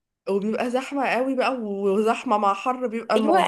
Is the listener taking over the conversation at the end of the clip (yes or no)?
yes